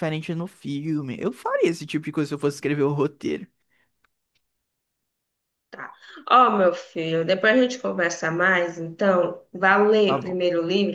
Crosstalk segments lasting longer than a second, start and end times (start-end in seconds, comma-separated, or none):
none